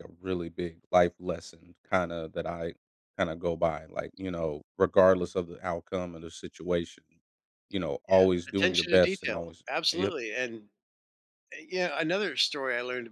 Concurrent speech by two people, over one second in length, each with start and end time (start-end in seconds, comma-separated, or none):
8.1-10.1